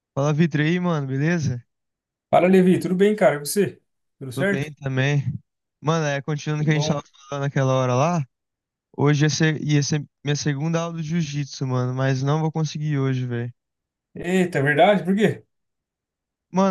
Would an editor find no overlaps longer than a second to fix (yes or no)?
yes